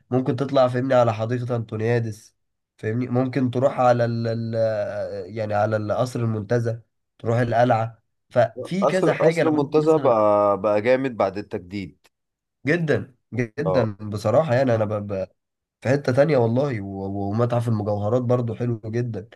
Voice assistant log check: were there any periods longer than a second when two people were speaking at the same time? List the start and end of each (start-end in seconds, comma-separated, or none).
8.8-10.1